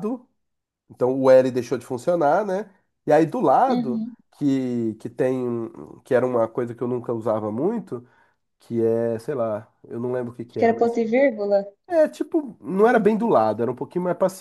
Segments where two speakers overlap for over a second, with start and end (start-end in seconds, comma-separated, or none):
none